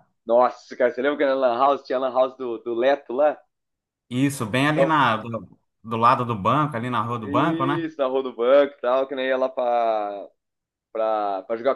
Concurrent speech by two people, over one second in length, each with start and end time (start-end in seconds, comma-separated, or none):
none